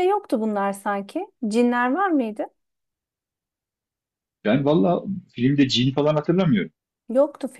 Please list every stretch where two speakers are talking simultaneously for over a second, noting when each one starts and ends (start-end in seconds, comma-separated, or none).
none